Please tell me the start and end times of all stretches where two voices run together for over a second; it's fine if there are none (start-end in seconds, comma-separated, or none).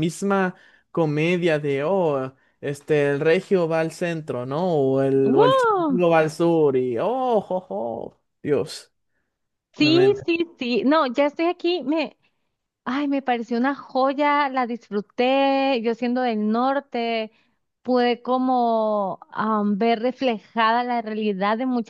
none